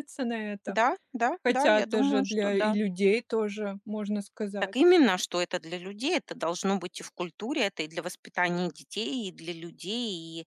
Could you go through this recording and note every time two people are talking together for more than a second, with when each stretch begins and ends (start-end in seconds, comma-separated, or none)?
1.4-2.8